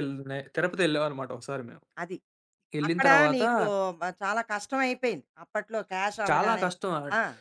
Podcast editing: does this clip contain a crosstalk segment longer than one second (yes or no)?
no